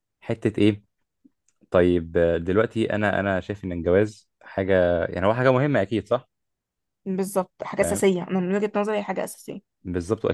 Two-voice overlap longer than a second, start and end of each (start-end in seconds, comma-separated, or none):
none